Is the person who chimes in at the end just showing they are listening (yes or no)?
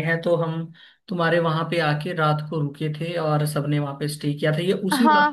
no